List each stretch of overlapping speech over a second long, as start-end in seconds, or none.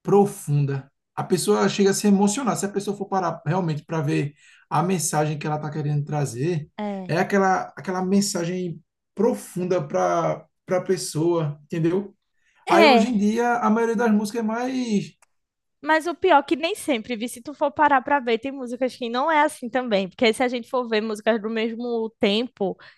none